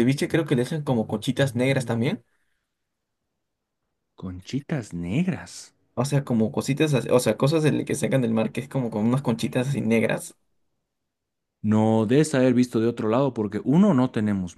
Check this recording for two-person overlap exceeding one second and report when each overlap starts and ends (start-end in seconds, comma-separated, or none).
none